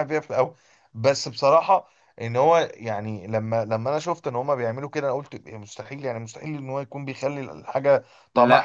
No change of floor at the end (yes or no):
yes